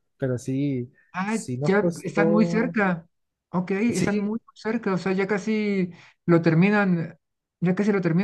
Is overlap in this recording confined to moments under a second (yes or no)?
no